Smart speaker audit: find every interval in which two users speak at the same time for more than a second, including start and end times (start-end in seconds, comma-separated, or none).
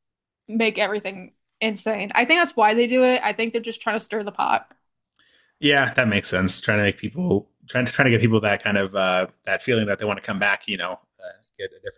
none